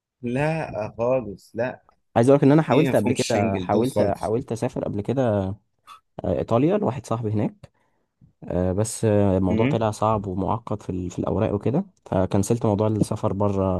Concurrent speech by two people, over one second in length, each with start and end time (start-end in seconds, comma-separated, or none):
2.5-4.3